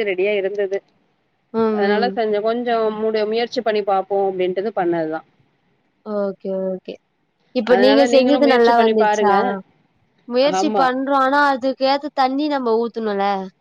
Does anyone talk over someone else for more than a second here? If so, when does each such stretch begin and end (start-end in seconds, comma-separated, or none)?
7.7-9.3